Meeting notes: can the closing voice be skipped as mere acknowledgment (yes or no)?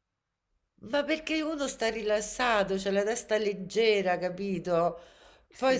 yes